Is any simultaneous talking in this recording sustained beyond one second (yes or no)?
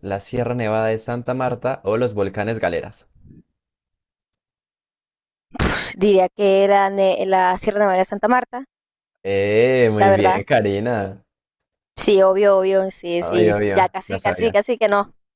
yes